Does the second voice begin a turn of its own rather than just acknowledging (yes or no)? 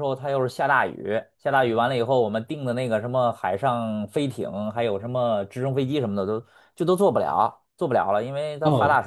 no